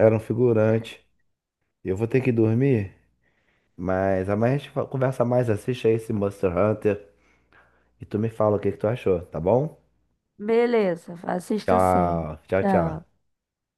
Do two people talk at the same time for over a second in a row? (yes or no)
yes